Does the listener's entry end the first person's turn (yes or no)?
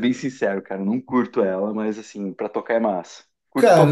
yes